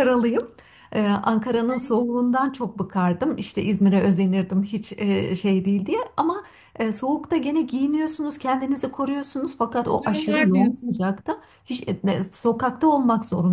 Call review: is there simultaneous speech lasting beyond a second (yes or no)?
yes